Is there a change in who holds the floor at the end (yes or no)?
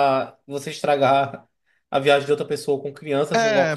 yes